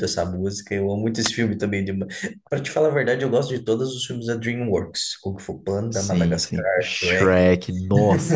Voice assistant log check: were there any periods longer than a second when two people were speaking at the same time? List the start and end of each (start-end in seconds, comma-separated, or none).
5.9-7.4